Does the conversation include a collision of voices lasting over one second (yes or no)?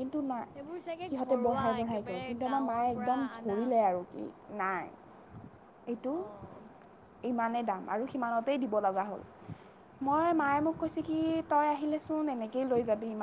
yes